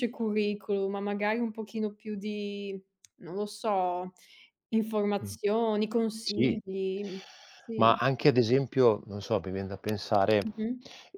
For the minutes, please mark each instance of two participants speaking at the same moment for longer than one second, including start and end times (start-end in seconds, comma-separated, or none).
none